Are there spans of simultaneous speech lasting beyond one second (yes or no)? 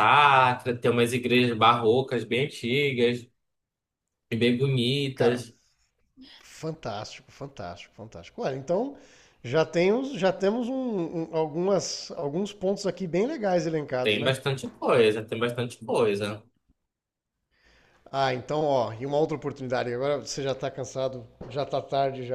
no